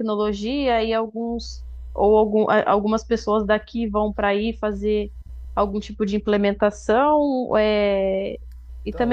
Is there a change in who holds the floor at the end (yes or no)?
yes